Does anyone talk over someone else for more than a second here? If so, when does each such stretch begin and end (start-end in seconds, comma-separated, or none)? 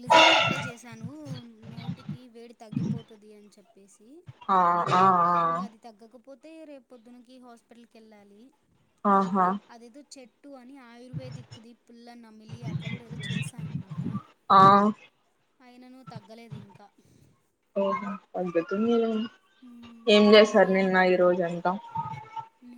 none